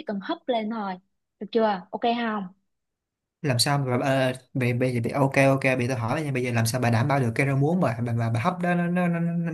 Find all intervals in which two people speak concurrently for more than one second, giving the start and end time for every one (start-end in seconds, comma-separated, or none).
none